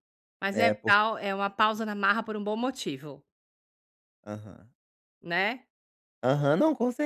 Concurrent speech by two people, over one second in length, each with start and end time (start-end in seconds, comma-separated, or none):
none